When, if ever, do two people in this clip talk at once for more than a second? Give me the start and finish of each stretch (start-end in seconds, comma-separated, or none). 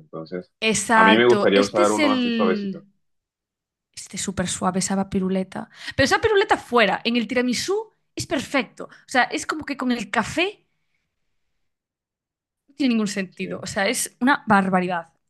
0.9-2.8